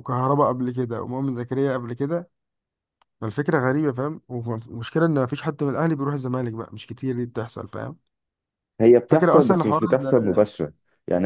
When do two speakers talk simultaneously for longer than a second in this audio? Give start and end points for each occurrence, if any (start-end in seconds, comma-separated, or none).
9.1-10.4